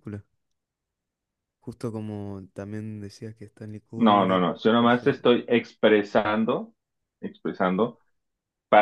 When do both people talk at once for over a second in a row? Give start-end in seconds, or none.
4.0-5.4